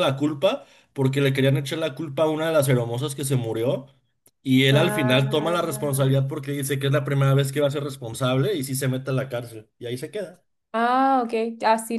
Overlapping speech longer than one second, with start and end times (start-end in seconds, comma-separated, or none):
4.7-5.9